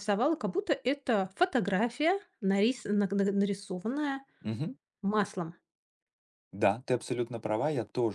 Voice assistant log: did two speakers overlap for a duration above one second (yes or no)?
no